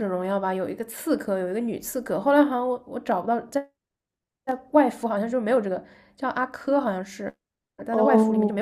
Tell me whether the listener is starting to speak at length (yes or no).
yes